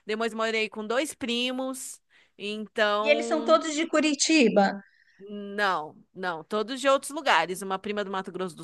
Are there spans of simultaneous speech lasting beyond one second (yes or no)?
no